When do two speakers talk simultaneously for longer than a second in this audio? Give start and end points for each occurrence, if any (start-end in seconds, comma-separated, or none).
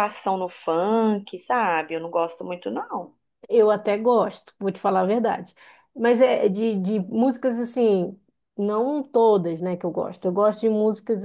none